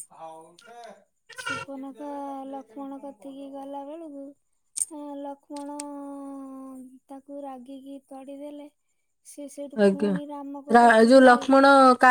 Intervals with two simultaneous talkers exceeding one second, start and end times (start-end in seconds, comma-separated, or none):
9.8-11.4